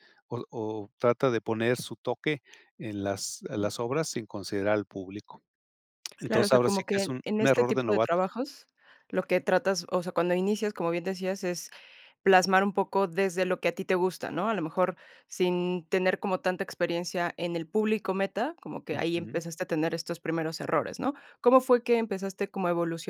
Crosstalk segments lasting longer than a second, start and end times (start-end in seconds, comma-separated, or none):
6.2-8.2